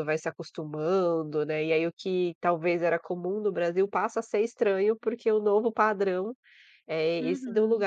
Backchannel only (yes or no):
yes